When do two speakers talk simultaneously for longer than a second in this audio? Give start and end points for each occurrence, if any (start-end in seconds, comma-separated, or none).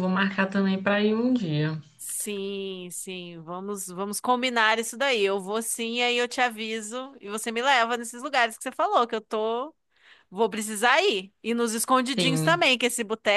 none